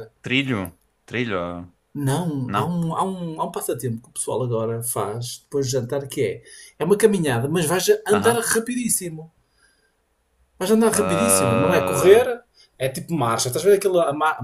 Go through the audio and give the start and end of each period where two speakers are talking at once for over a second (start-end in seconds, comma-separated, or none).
10.9-12.3